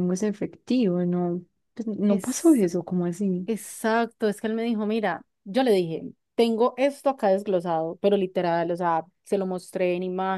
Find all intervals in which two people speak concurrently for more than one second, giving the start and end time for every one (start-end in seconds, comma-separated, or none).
none